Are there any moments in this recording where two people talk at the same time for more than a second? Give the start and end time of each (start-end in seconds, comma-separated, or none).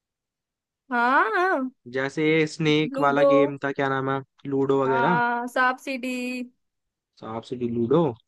none